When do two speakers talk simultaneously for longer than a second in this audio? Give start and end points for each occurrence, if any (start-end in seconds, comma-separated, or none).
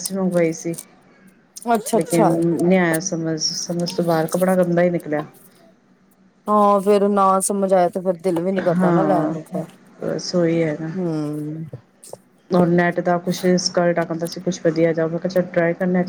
none